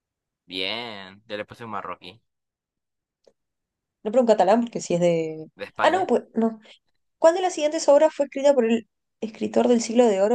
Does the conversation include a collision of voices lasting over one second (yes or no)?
no